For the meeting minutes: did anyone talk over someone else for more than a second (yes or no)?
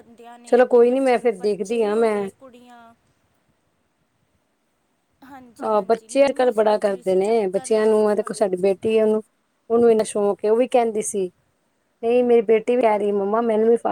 yes